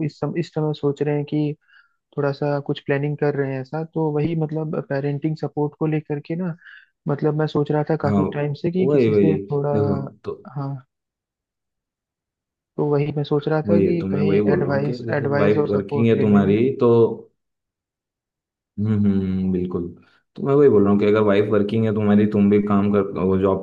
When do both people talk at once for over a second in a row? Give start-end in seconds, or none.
13.7-16.6